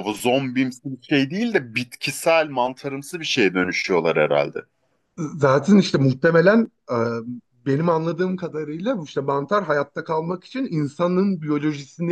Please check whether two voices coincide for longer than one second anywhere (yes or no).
no